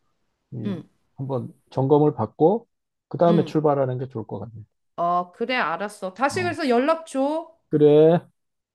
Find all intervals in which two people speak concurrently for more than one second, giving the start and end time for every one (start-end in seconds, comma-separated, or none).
none